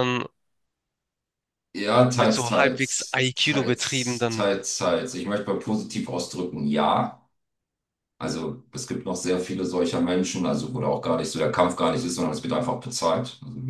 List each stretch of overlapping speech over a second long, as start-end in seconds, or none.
2.1-4.5